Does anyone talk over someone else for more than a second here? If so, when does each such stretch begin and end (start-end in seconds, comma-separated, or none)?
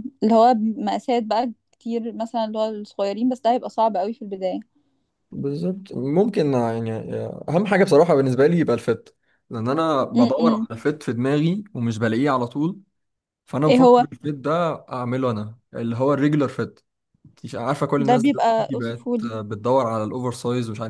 18.0-19.3